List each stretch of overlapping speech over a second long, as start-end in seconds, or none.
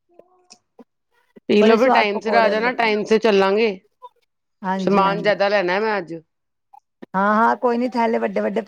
1.6-2.9